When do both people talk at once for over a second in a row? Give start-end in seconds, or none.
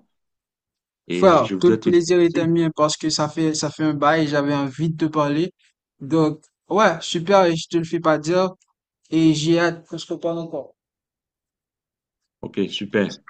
1.1-2.5